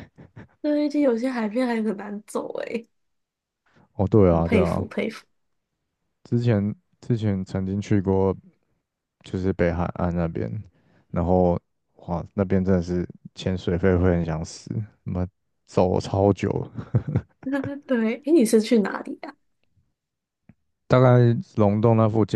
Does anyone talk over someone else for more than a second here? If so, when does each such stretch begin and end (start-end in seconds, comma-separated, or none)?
none